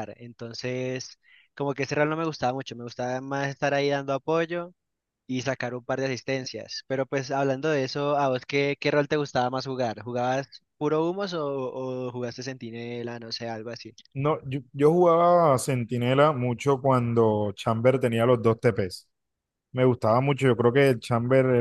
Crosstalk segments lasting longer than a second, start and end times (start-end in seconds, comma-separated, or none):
none